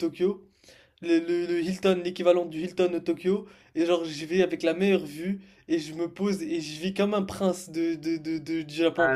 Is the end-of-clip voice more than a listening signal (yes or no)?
no